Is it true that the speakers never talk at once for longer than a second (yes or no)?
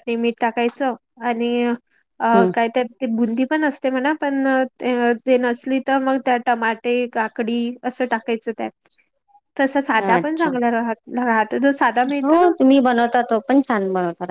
yes